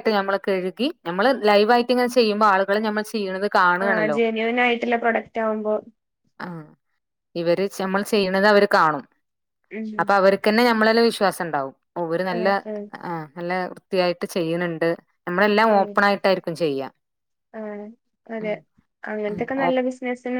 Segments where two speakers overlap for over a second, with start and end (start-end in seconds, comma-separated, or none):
none